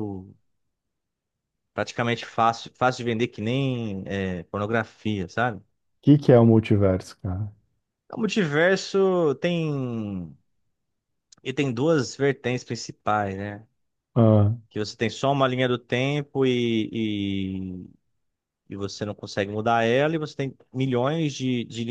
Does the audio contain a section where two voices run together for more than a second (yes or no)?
no